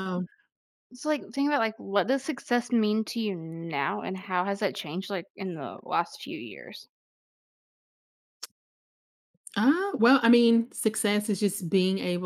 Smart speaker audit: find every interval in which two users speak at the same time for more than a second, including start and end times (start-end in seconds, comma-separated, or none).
none